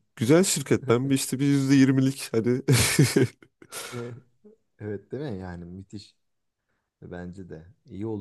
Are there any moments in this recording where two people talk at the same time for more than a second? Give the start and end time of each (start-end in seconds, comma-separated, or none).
none